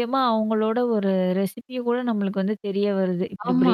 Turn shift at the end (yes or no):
yes